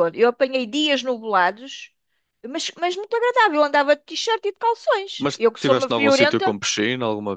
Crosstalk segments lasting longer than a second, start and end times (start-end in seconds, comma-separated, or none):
5.2-6.5